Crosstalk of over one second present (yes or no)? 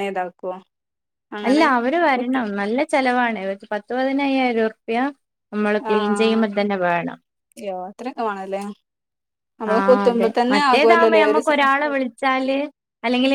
yes